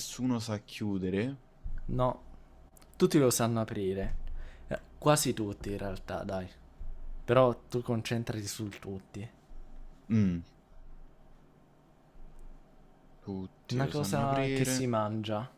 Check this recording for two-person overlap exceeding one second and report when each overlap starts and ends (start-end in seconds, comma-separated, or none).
13.7-14.9